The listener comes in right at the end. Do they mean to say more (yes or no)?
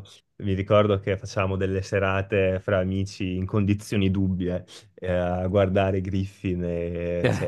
no